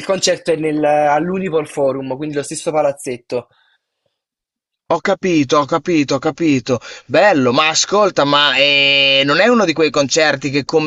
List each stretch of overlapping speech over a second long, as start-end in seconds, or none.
none